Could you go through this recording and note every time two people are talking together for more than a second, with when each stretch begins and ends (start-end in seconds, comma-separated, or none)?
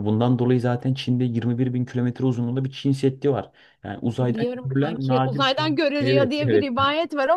4.2-6.7